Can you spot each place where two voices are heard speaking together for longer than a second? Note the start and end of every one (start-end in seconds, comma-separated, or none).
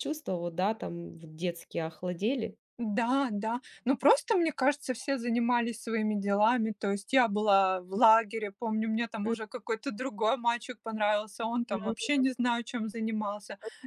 none